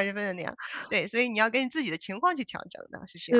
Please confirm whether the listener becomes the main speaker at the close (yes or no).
yes